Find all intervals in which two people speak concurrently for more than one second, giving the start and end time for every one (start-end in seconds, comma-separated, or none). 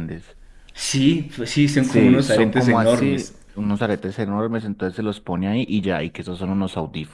1.8-3.3